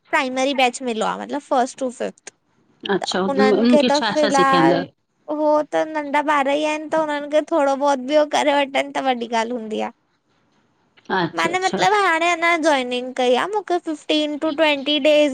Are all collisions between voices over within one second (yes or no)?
no